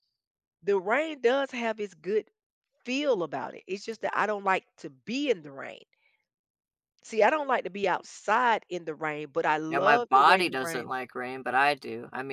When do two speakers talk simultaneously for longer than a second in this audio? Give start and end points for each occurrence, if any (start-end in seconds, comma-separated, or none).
9.7-10.9